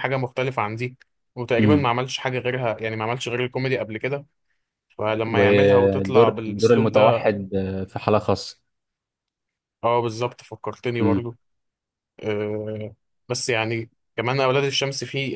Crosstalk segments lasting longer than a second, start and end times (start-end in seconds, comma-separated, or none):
5.3-7.3